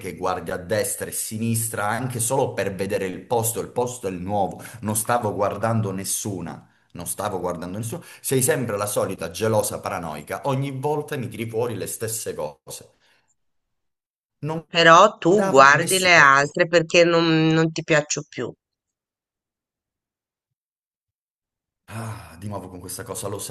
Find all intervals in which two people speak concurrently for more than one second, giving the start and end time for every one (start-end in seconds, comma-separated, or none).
15.3-16.6